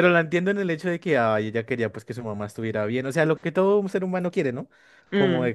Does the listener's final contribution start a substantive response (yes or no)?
no